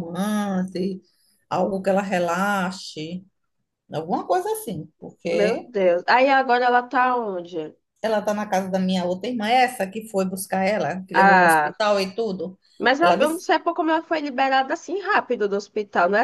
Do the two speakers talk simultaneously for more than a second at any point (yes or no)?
no